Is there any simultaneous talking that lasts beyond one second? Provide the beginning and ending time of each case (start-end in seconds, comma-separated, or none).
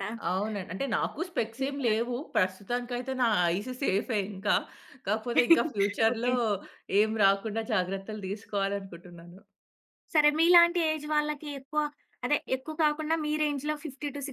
none